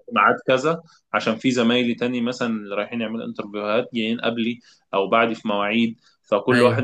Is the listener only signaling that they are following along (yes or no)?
yes